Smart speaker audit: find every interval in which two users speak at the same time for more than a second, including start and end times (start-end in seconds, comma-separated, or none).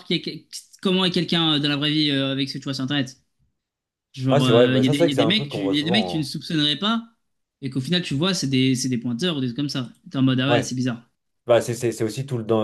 4.3-6.3